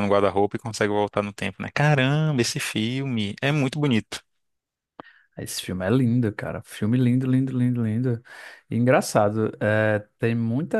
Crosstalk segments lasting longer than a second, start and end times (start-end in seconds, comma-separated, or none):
none